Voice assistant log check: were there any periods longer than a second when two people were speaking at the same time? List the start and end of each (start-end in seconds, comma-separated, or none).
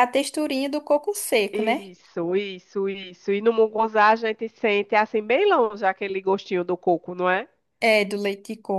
none